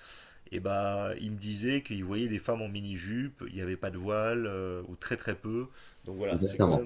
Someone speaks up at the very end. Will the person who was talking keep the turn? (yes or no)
no